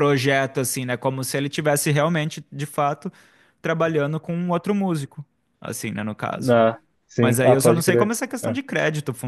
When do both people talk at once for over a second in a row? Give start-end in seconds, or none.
7.2-8.6